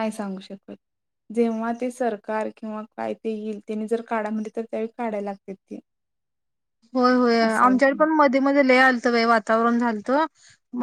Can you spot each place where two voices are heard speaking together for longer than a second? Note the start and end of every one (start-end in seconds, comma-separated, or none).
none